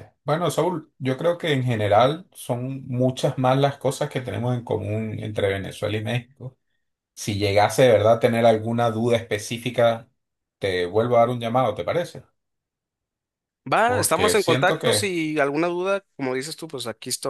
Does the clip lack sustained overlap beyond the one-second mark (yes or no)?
no